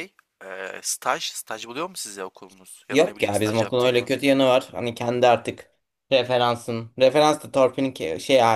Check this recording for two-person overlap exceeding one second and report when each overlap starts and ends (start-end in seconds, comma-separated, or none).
2.9-4.1